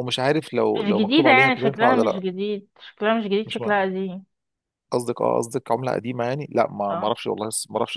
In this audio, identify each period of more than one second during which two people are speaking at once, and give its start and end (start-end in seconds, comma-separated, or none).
0.8-2.2